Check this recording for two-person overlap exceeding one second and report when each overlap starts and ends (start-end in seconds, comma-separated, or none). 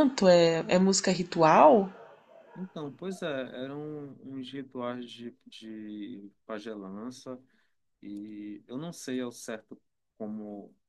none